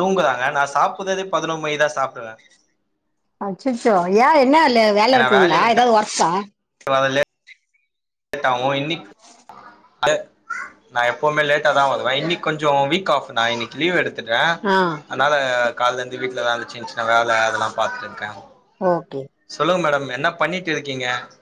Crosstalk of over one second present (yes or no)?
no